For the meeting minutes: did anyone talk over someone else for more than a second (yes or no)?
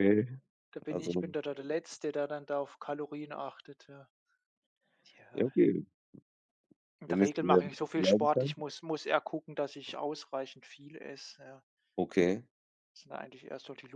yes